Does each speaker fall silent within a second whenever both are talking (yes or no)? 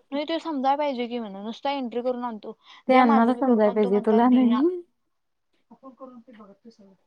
no